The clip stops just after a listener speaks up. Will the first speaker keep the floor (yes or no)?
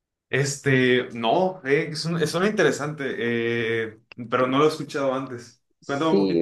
no